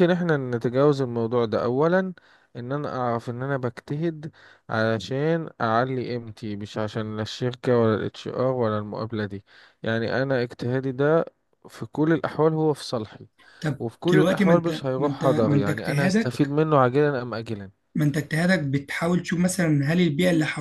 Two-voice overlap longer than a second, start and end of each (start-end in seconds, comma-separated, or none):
13.8-16.5